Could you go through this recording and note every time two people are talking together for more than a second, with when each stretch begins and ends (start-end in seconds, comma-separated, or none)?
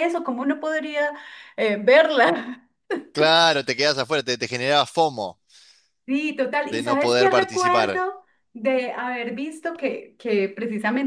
6.7-8.0